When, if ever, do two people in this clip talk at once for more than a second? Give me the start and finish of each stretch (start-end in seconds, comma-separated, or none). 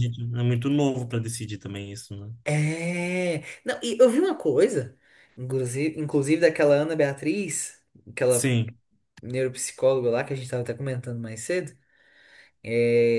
none